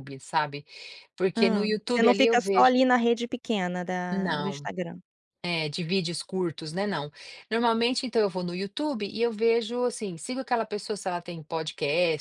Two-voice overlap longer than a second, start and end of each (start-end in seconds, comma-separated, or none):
1.4-2.8